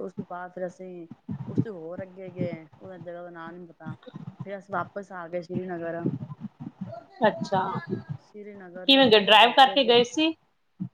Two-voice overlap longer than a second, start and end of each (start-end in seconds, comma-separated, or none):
8.2-9.8